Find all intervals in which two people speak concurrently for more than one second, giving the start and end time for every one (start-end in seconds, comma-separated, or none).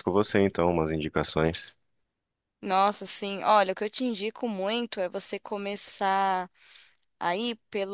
none